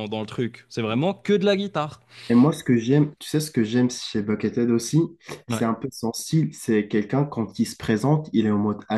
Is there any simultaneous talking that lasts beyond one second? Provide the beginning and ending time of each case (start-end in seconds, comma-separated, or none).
none